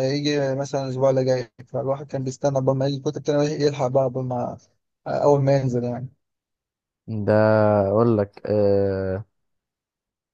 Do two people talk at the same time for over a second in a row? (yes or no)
no